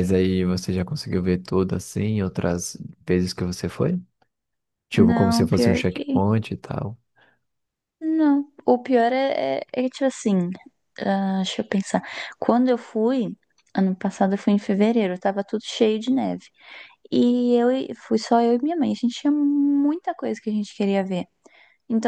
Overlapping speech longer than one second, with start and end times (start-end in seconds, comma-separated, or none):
4.9-6.2